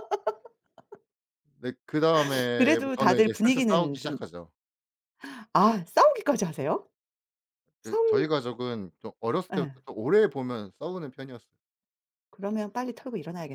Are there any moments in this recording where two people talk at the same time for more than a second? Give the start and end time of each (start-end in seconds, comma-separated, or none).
2.5-4.2